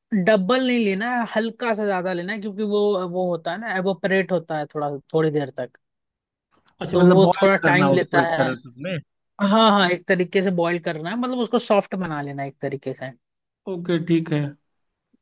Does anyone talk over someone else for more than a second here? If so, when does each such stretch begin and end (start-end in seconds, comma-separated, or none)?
6.9-8.5